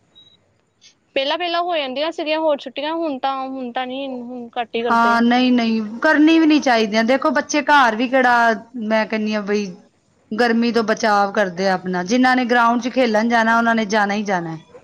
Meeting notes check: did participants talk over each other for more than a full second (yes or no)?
no